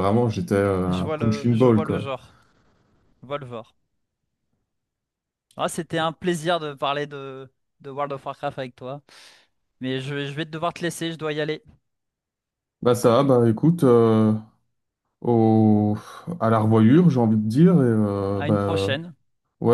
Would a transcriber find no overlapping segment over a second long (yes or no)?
no